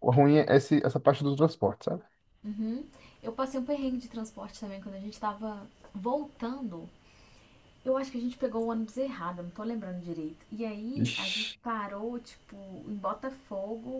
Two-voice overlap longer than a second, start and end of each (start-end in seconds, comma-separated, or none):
none